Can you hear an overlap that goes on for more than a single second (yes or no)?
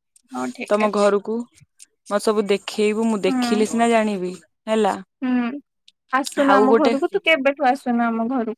no